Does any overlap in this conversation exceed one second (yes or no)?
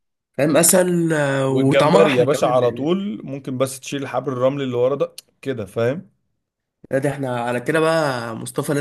yes